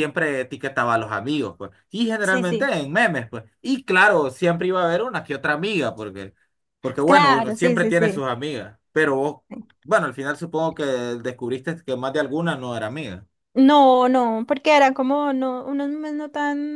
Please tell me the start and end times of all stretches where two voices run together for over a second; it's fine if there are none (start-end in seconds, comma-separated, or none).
7.0-8.3